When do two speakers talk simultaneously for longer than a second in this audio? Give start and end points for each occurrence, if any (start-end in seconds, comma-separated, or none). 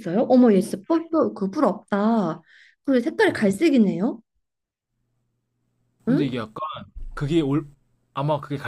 none